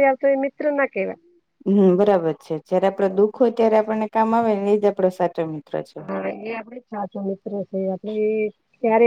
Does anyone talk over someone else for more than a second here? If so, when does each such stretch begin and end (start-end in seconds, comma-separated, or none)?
none